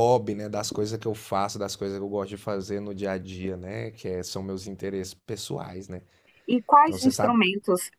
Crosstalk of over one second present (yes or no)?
no